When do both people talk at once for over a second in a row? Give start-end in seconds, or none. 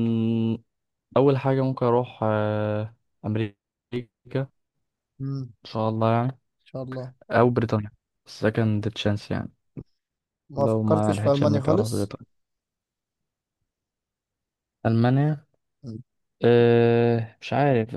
10.6-12.1